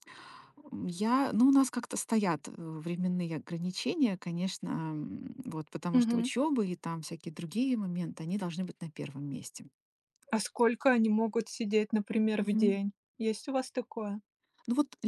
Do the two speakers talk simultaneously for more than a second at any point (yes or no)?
no